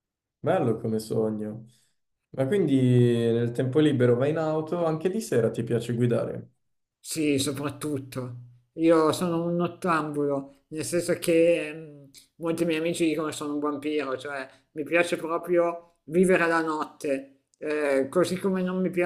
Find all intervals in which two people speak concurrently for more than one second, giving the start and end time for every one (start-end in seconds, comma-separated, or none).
none